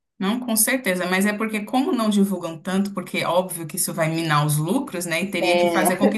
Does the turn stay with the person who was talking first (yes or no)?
yes